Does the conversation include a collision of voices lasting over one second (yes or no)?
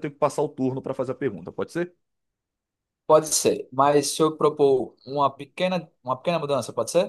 no